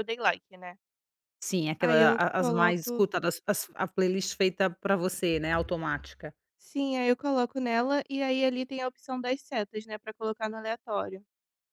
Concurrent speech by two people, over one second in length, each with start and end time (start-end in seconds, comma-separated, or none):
1.8-3.0